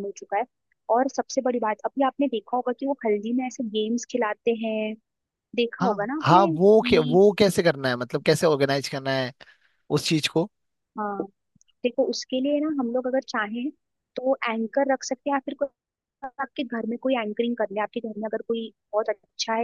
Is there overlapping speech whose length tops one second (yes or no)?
yes